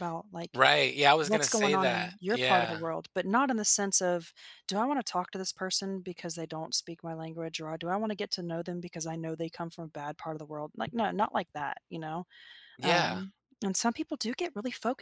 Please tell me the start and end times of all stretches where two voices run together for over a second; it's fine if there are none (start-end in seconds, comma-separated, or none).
1.2-2.8